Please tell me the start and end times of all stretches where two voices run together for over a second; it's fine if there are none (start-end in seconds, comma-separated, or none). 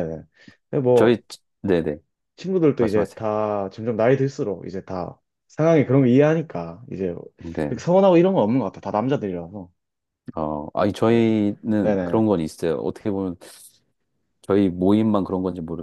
none